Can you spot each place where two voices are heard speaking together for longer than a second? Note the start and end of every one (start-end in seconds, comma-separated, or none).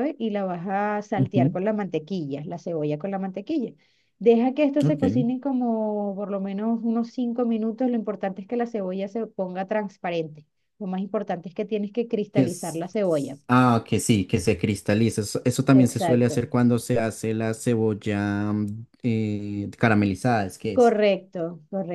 none